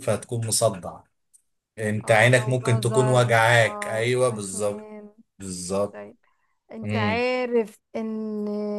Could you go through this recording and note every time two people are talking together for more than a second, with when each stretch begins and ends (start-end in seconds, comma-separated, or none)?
2.0-4.9